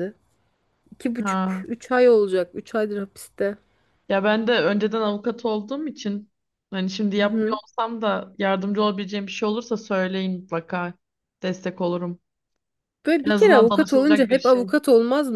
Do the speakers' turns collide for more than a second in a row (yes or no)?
yes